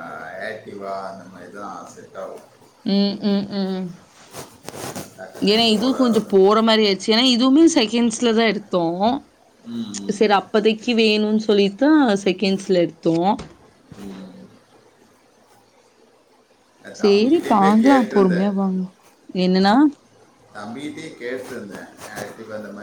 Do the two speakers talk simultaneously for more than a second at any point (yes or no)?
yes